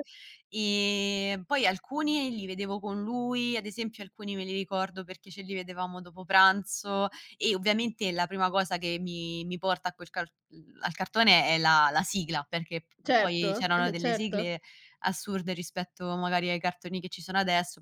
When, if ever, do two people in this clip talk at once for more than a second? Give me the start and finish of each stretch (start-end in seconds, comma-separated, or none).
13.0-14.5